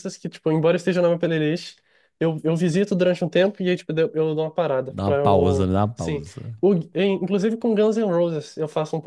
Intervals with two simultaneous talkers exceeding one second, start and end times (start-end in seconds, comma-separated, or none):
4.8-6.2